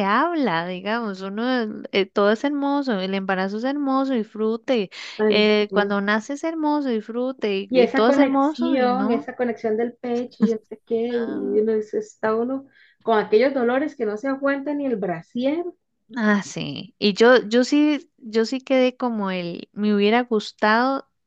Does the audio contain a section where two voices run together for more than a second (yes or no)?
yes